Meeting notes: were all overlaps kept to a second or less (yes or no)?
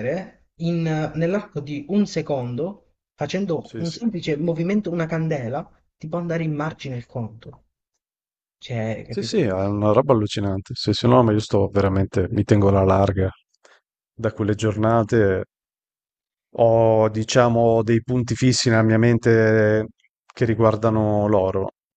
yes